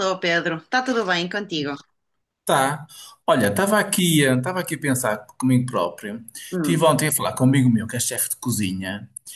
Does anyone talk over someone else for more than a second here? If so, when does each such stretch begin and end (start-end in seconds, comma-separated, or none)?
none